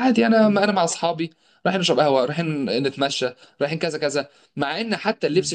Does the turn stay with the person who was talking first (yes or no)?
yes